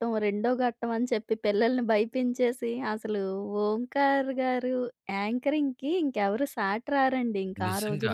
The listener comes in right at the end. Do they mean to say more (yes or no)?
yes